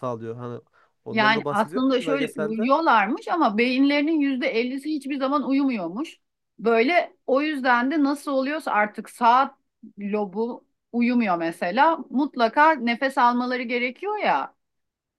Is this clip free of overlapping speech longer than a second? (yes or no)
no